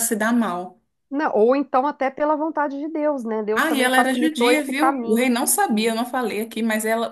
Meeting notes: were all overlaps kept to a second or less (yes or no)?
no